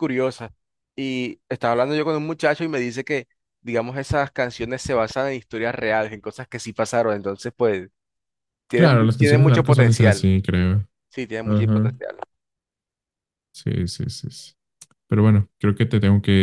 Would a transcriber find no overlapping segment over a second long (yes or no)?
no